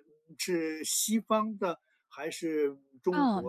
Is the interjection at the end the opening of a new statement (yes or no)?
yes